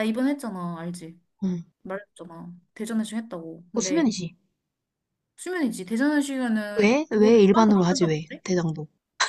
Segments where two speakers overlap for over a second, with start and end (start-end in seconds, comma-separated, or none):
6.8-8.4